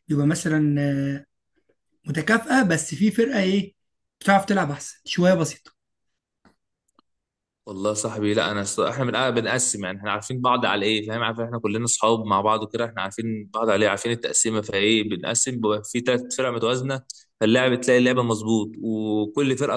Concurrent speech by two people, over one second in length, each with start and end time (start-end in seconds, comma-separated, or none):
none